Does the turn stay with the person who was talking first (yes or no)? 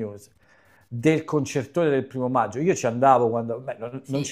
yes